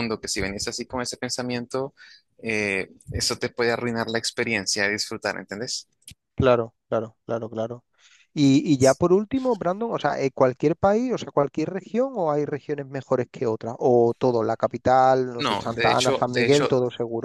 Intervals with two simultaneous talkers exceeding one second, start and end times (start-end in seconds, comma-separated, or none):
15.4-16.7